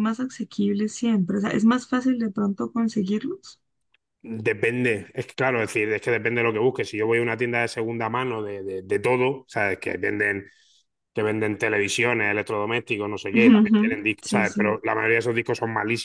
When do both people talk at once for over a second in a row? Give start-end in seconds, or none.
13.3-14.8